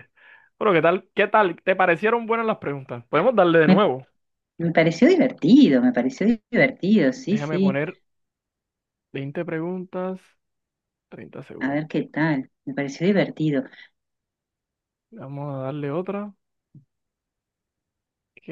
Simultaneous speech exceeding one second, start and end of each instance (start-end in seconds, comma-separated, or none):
none